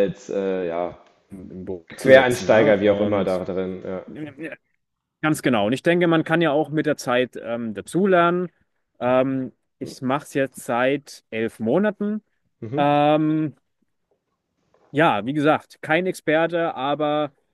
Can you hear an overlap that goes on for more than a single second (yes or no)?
yes